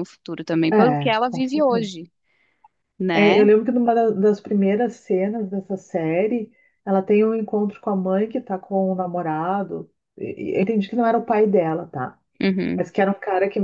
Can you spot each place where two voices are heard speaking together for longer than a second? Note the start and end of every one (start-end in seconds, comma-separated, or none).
0.7-1.9